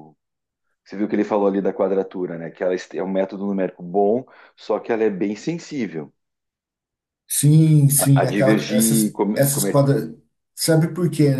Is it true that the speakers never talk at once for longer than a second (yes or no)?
no